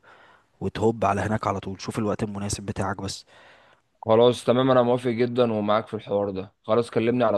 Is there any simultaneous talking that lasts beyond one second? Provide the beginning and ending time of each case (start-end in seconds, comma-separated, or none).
none